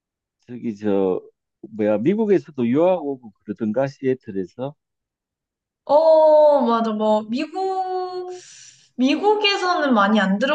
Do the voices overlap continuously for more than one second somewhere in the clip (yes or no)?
no